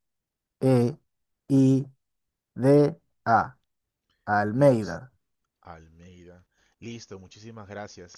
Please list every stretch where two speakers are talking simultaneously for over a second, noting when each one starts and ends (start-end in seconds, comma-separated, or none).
none